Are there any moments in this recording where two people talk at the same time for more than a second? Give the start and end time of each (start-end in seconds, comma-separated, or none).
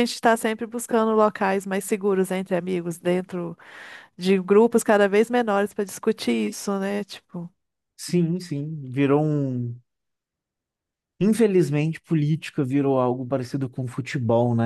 none